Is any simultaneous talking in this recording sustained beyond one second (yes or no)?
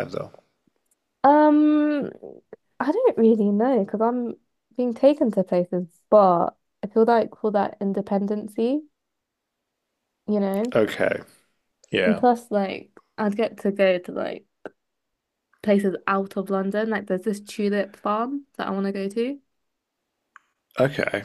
no